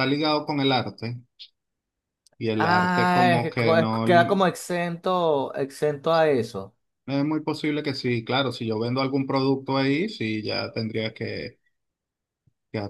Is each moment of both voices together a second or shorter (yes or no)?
no